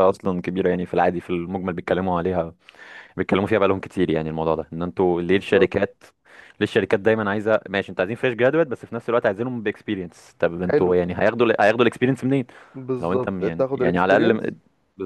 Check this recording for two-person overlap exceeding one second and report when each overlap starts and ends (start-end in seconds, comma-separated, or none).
13.0-14.5